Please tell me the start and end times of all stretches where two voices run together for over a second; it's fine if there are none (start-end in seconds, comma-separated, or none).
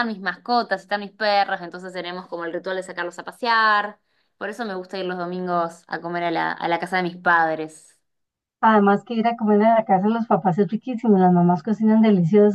none